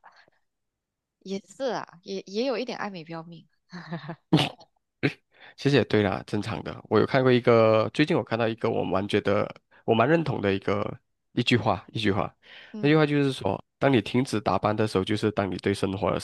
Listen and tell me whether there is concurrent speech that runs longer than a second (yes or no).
no